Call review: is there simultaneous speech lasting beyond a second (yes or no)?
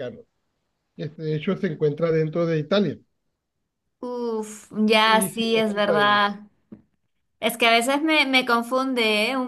yes